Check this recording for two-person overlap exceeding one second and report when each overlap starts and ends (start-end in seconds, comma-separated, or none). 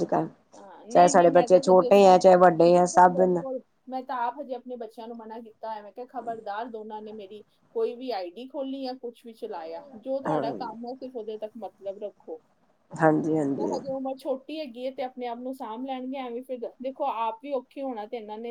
0.9-3.2